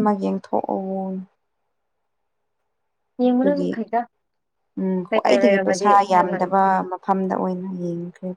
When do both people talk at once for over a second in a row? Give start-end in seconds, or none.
5.1-6.5